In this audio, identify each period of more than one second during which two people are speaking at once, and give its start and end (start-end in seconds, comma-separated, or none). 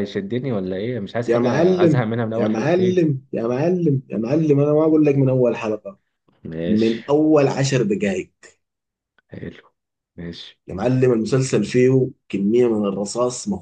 1.3-3.0